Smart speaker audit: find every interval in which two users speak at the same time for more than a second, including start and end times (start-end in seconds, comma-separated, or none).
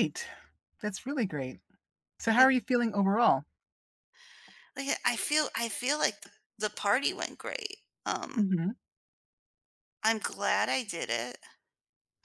none